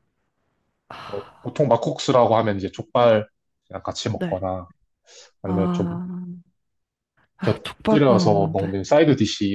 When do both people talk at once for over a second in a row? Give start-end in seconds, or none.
7.4-8.7